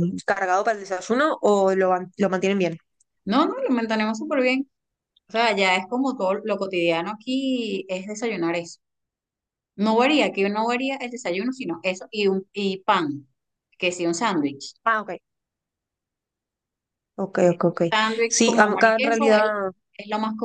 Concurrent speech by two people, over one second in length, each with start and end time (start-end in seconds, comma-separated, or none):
18.3-19.5